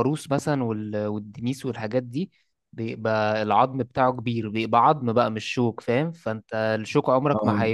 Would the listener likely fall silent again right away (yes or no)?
yes